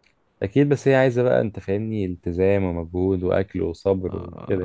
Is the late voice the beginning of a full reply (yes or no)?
yes